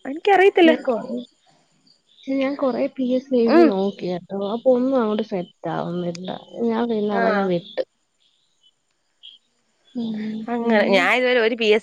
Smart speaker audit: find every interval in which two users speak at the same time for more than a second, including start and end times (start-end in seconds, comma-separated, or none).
none